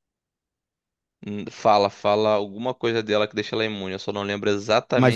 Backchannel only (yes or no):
no